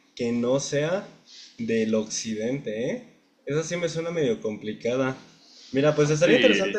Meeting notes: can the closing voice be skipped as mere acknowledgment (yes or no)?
yes